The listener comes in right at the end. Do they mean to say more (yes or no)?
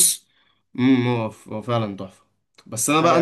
no